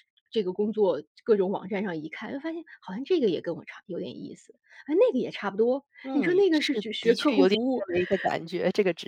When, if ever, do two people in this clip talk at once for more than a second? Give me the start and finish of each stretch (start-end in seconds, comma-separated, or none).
6.0-7.8